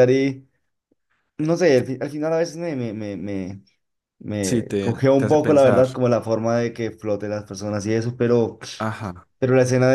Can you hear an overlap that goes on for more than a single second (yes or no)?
yes